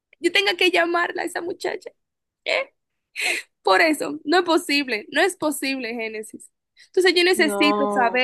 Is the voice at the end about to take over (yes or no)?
no